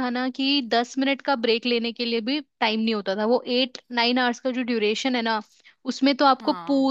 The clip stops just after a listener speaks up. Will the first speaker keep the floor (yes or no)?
yes